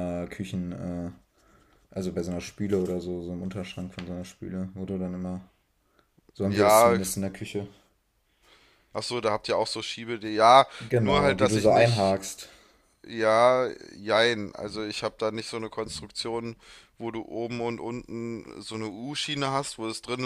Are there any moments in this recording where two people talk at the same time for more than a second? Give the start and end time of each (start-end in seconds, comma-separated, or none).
10.8-12.2